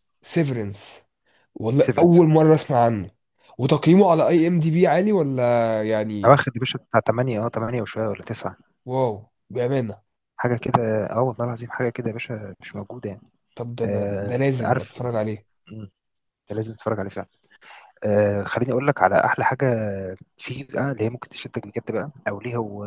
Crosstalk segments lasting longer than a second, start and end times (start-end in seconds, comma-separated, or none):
13.8-15.2